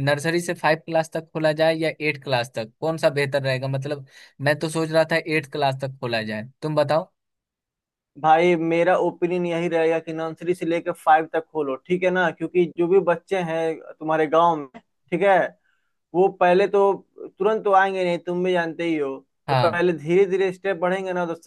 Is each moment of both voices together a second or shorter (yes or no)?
yes